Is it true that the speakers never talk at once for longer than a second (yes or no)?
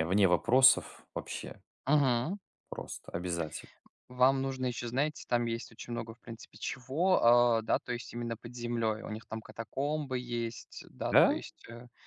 yes